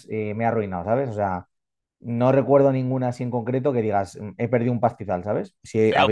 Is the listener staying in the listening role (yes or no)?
no